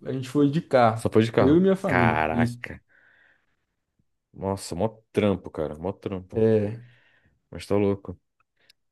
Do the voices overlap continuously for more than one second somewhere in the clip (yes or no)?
yes